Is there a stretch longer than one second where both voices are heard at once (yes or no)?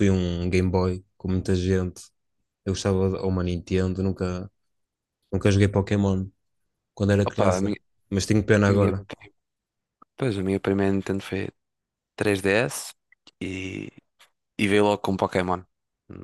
no